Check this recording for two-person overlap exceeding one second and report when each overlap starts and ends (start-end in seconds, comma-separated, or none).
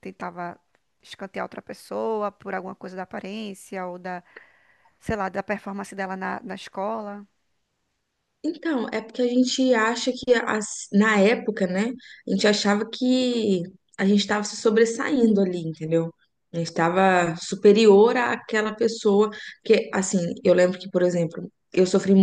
none